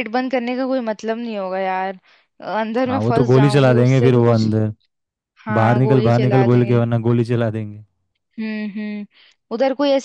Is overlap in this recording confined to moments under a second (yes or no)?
no